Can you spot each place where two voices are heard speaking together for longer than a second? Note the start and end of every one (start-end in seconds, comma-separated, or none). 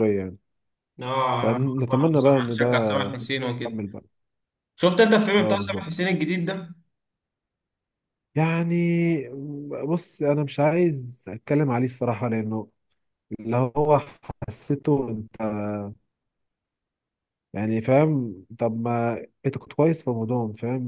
1.4-2.9